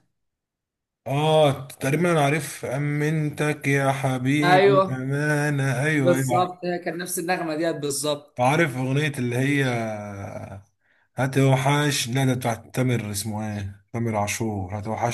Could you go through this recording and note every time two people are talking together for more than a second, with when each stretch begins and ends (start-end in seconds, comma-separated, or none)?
none